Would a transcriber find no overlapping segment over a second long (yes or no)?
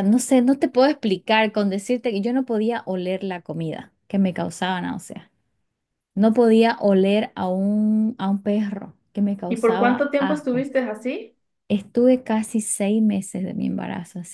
no